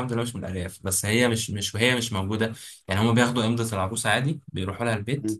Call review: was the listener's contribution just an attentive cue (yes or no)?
yes